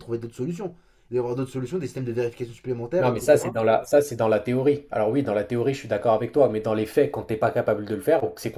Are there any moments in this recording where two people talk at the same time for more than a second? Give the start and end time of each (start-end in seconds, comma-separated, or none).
none